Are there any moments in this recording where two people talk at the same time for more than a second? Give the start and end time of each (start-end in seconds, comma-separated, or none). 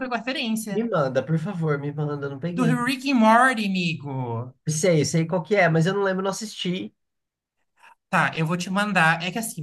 none